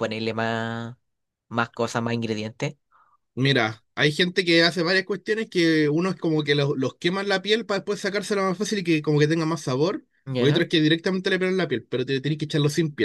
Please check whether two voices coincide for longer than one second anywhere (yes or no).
no